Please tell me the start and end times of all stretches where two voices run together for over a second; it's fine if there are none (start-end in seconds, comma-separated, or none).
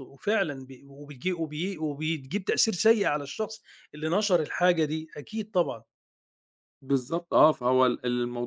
none